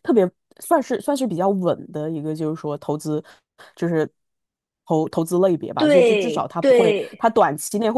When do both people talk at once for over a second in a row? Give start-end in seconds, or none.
5.8-7.2